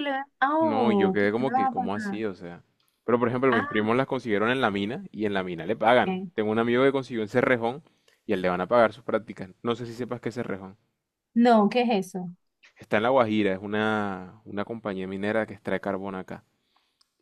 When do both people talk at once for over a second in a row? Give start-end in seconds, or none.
0.6-2.2